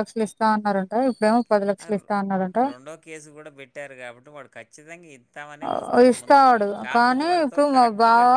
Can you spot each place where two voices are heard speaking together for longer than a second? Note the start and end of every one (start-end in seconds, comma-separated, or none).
5.7-7.8